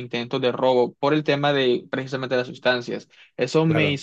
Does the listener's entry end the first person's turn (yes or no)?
no